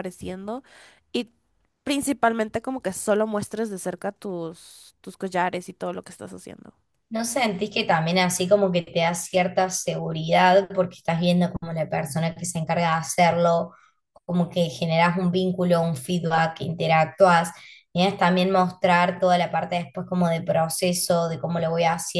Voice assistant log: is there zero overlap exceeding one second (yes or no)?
yes